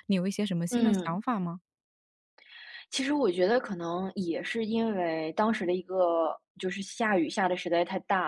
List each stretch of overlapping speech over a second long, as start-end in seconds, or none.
none